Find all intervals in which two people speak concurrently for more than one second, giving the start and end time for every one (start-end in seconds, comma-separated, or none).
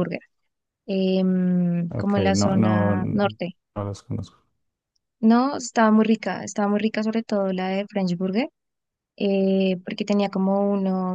1.9-3.3